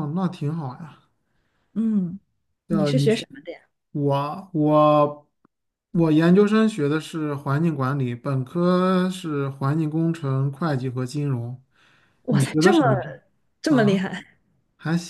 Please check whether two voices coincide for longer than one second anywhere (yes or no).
no